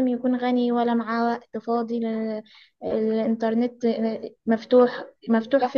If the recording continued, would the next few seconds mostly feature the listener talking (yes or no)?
no